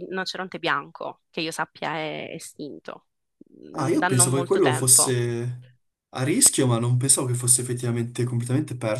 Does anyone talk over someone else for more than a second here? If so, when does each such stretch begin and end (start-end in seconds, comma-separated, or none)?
3.7-5.2